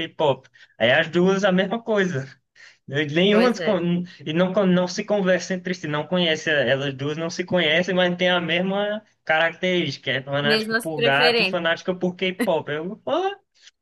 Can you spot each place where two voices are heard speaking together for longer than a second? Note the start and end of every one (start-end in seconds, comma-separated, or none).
10.4-11.7